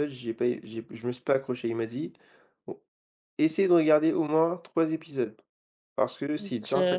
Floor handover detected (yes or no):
no